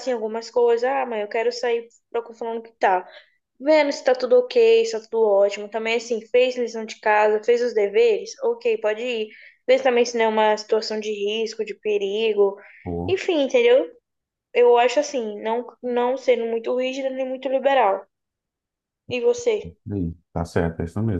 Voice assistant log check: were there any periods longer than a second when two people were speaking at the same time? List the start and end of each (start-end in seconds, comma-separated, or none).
none